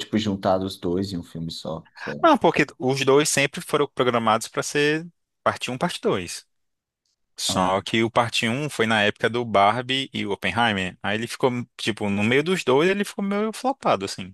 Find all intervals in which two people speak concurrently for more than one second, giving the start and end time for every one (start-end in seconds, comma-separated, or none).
none